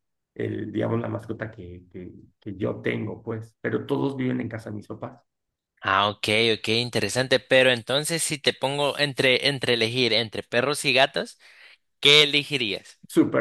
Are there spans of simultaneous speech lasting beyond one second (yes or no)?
no